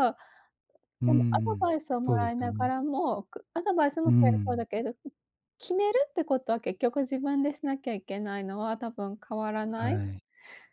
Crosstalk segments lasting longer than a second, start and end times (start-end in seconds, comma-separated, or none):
1.1-2.8